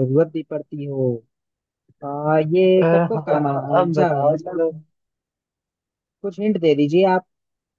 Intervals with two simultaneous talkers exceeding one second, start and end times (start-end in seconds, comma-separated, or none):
2.6-4.7